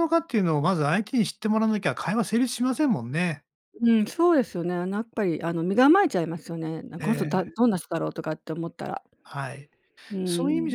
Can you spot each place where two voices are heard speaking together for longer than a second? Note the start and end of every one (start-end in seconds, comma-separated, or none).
none